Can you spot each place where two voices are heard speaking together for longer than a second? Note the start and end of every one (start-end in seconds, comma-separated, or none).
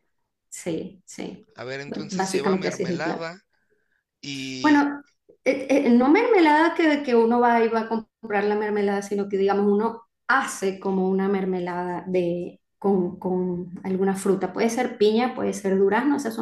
1.9-3.3